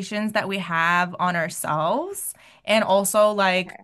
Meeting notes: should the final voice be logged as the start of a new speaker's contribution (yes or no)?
no